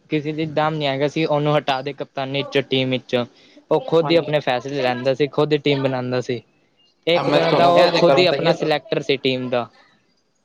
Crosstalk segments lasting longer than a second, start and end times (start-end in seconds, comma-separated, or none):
7.3-8.8